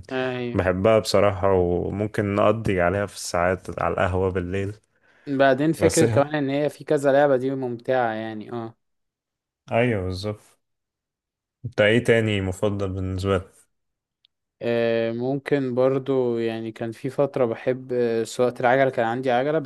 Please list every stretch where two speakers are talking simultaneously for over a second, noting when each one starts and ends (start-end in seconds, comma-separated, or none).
none